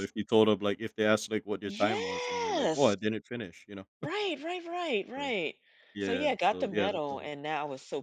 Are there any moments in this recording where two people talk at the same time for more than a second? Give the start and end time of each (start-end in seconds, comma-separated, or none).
1.7-3.0, 6.0-7.3